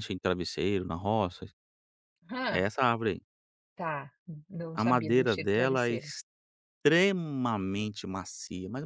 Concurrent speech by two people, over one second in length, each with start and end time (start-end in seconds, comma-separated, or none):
4.7-6.0